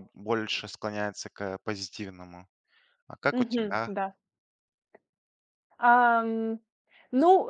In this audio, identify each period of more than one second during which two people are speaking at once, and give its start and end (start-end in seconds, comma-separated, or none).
none